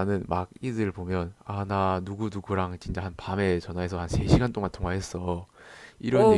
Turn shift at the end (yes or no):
no